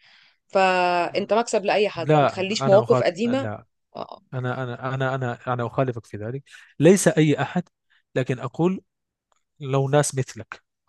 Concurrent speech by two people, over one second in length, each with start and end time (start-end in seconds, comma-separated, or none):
1.9-3.5